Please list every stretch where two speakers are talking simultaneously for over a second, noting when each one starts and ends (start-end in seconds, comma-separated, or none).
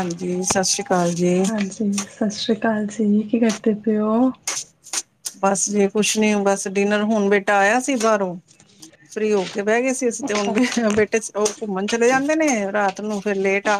none